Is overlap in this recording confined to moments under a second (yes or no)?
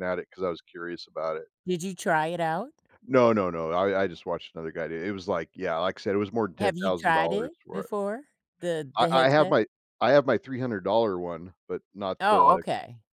no